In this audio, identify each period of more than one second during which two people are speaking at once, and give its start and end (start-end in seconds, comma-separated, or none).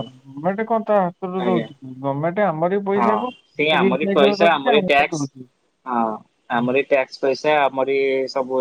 3.8-5.5